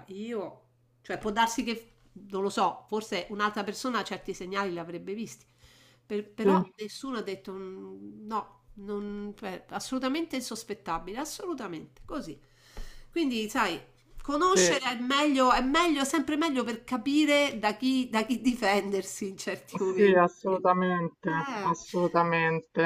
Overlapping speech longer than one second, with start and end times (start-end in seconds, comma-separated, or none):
none